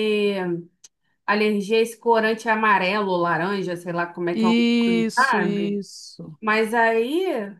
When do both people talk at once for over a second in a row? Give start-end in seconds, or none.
4.3-5.8